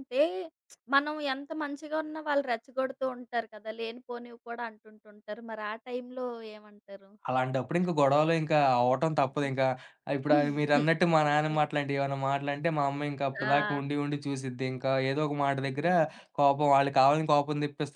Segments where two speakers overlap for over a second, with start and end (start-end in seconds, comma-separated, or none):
none